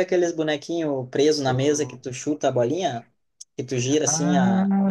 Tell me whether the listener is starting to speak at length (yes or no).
yes